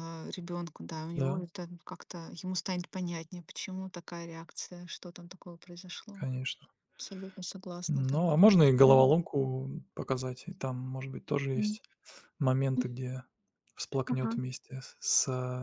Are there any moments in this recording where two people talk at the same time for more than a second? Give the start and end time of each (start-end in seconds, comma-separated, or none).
none